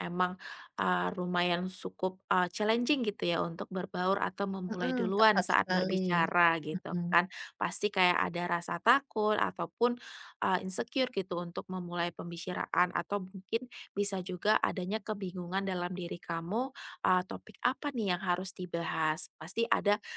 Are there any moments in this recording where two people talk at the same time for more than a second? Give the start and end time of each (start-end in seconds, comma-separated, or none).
4.7-6.0